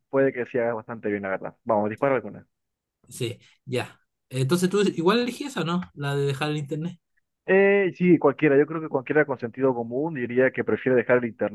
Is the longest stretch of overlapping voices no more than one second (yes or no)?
yes